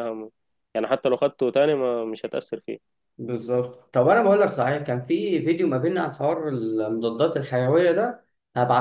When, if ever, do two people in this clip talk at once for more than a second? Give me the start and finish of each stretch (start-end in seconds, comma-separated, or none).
none